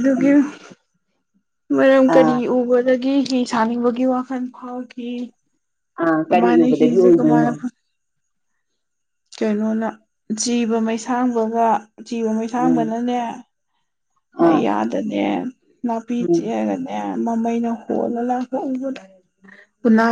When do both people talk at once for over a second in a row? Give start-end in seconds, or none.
6.2-7.5